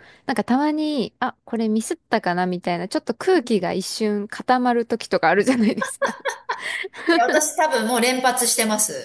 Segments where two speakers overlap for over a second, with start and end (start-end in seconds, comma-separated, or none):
none